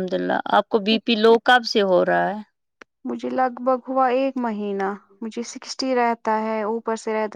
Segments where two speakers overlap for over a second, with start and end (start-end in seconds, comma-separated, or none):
none